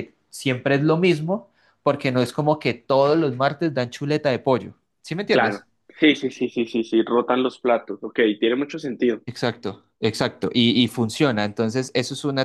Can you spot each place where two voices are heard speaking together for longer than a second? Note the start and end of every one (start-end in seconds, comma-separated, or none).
none